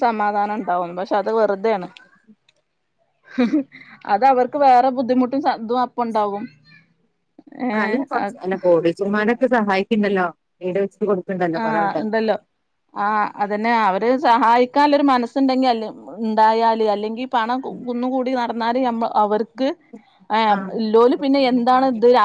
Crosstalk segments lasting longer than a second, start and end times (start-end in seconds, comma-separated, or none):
none